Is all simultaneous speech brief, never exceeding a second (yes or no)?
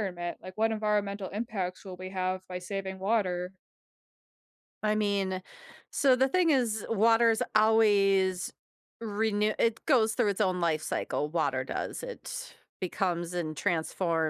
yes